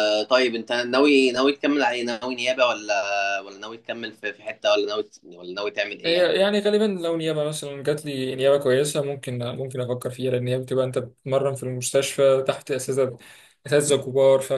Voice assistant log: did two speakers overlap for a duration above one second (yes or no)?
no